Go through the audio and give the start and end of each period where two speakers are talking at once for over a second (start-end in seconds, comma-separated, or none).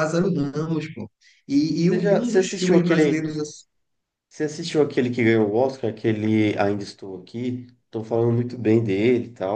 1.8-3.3